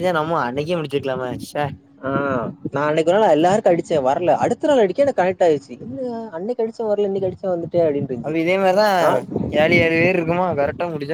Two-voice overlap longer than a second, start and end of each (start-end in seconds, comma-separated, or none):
none